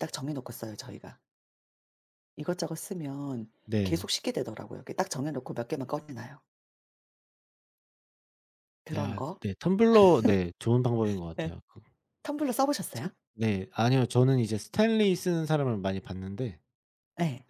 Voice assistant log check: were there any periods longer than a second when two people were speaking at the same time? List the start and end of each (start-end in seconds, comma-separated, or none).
none